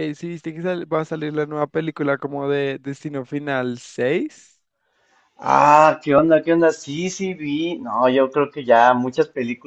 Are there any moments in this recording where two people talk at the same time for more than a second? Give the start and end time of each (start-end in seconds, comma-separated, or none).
none